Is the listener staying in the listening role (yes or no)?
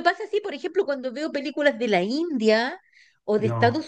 yes